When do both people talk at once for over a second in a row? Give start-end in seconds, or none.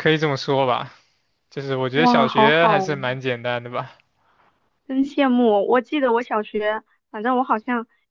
1.9-3.2